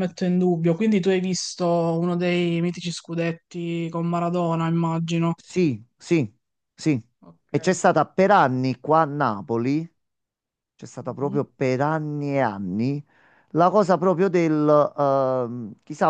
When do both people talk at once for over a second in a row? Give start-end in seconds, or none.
none